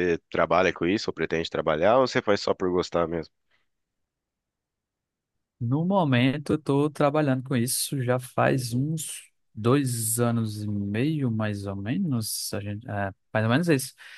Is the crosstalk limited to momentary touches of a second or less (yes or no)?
yes